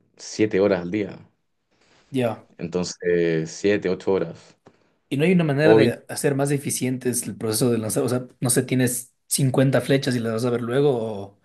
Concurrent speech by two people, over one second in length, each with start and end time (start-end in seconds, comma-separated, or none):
none